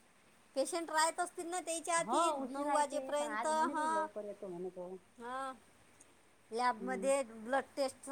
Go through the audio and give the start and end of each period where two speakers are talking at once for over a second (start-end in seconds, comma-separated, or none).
2.0-4.1